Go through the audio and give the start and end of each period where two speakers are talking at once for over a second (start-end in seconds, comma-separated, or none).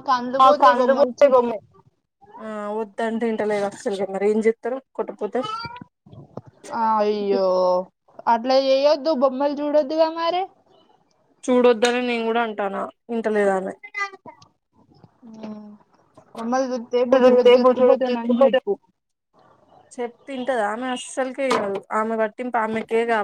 17.1-18.6